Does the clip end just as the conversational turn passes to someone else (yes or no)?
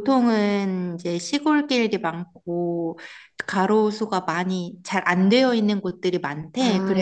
no